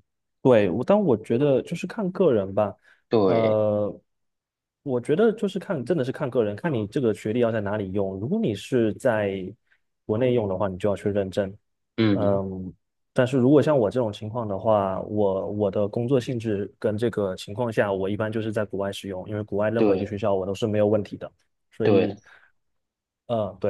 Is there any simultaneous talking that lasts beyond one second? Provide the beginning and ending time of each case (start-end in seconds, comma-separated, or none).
none